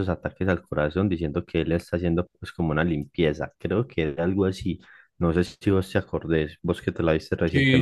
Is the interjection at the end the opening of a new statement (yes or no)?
yes